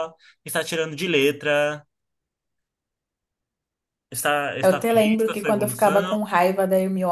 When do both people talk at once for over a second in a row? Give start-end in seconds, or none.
4.6-6.2